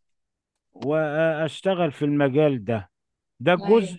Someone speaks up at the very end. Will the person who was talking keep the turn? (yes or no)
yes